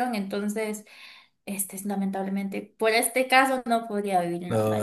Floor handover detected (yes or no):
yes